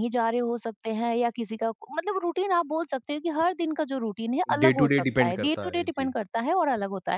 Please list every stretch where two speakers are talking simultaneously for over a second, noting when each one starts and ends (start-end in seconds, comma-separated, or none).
4.6-6.2